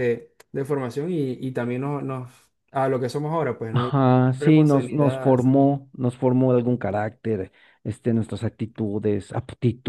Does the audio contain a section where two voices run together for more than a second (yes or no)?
yes